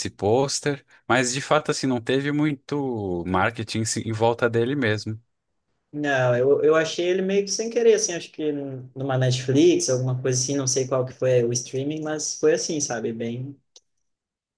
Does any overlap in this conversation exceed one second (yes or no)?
no